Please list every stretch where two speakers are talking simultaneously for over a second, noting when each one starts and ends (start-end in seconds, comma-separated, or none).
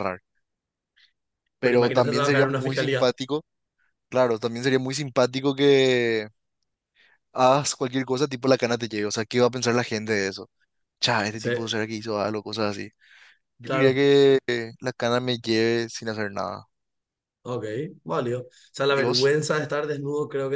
1.6-3.2